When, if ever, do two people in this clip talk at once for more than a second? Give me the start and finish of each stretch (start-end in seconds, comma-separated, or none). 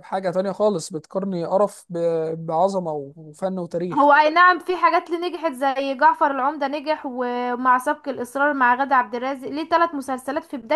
none